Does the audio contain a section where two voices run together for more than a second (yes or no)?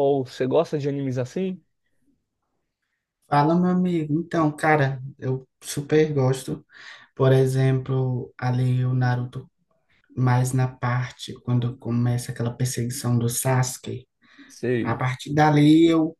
no